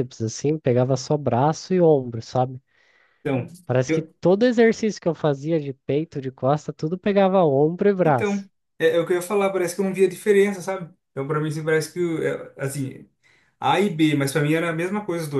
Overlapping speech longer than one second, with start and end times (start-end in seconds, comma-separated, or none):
none